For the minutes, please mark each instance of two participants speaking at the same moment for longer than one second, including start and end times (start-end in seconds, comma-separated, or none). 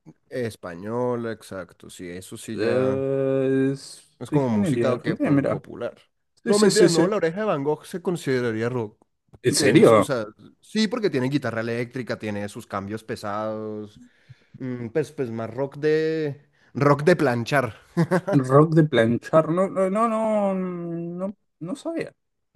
4.2-5.6